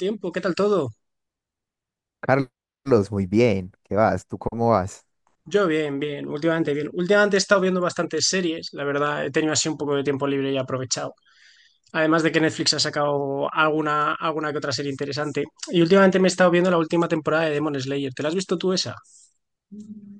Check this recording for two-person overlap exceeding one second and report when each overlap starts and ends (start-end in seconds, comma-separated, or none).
none